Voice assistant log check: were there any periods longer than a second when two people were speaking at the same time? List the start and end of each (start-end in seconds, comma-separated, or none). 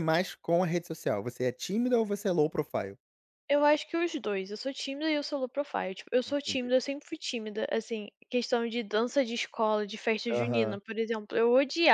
none